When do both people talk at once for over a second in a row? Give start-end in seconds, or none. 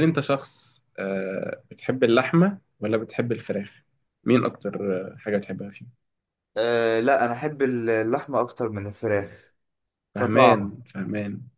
none